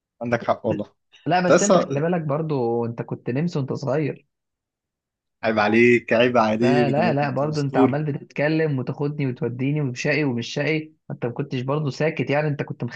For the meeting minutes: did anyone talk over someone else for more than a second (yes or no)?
yes